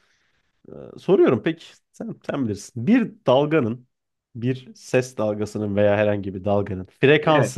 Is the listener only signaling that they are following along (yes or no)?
yes